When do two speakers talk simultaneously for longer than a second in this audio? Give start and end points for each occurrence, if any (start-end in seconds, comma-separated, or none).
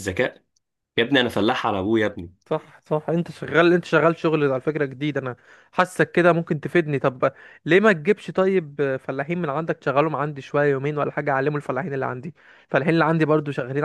none